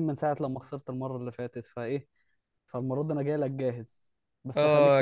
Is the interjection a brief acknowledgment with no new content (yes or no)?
no